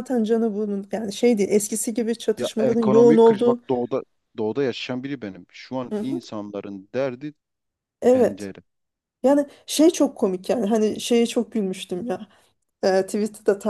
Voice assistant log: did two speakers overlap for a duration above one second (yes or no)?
yes